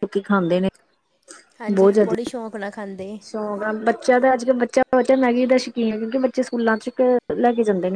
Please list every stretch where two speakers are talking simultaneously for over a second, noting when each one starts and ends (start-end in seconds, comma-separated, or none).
none